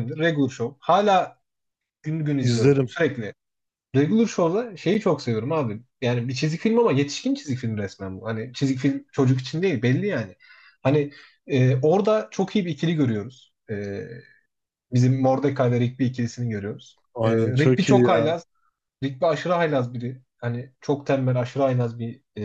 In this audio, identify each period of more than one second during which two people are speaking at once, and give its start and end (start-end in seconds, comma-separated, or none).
17.1-18.4